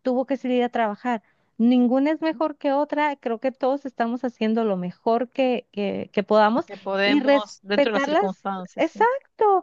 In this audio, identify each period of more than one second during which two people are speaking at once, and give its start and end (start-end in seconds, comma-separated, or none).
7.0-9.1